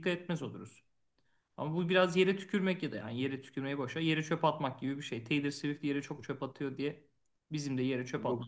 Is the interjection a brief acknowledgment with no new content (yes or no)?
no